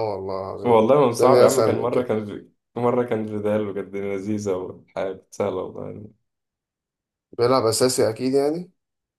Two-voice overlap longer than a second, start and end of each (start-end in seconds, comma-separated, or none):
0.6-2.1